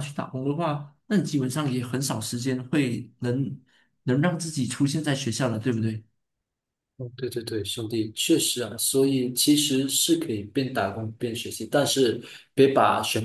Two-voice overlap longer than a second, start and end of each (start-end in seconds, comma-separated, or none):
none